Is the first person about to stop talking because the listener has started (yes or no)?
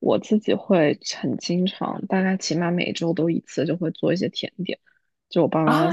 yes